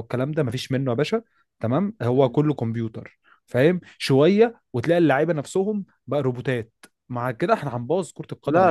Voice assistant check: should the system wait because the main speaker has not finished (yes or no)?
no